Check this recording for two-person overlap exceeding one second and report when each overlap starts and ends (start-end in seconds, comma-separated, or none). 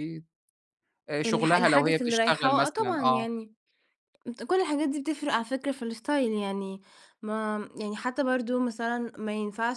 1.2-3.3